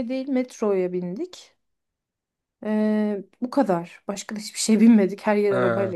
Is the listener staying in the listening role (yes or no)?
no